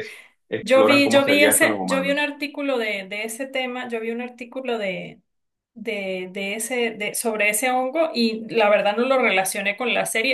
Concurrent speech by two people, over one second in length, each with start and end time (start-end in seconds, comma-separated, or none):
0.6-2.3